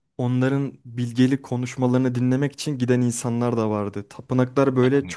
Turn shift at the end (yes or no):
no